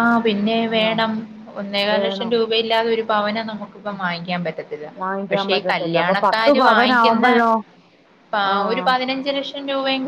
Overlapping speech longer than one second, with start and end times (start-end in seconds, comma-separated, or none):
5.3-7.3